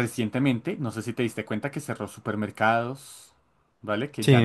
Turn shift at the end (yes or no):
yes